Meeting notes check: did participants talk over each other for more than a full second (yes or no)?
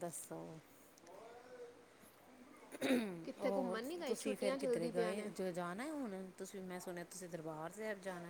yes